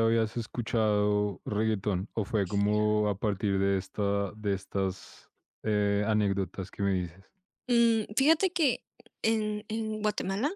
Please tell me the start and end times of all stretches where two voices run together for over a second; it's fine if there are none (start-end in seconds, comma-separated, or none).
none